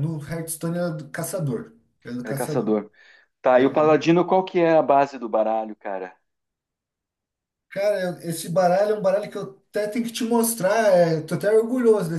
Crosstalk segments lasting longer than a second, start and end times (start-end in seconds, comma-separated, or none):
none